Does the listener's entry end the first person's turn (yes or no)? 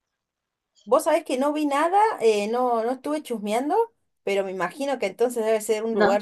no